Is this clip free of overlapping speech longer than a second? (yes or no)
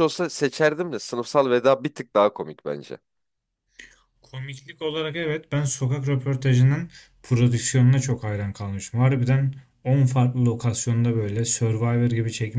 yes